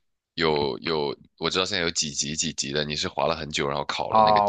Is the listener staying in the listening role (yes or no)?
no